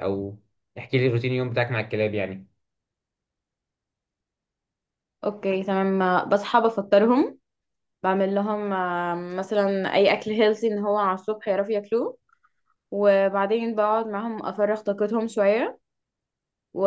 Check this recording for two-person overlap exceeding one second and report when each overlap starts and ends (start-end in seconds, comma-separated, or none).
none